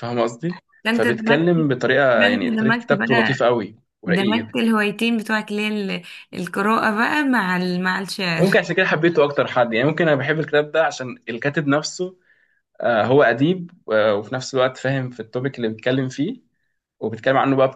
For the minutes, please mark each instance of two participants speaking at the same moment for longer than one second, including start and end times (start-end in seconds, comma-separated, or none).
2.1-3.4